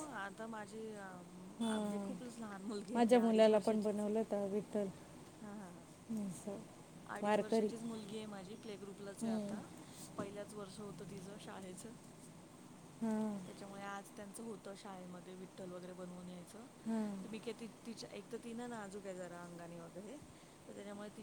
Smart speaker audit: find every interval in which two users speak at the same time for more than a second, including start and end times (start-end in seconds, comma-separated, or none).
2.9-4.2